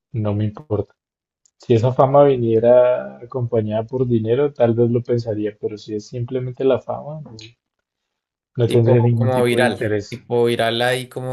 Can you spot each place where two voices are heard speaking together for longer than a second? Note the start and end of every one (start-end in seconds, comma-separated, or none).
8.7-10.2